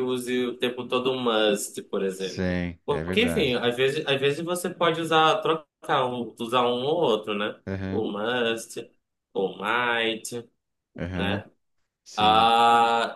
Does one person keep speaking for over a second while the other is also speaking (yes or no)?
yes